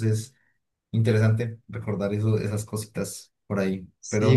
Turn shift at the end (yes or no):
yes